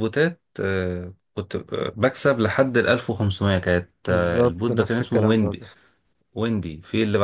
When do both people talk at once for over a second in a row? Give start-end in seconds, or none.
4.1-5.7